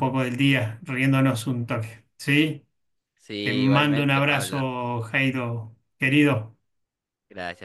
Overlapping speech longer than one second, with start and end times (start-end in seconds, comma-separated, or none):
3.4-4.7